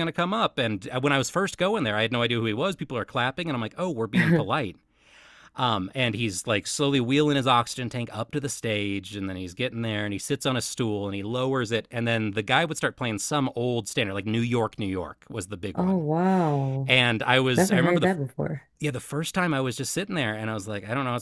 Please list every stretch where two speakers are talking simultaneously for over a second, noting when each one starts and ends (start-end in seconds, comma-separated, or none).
none